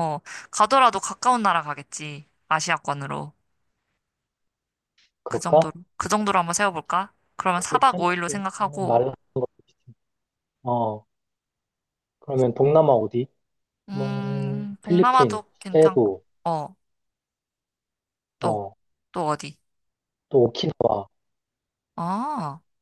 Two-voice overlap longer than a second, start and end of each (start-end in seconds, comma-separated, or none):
7.5-9.0, 13.9-16.2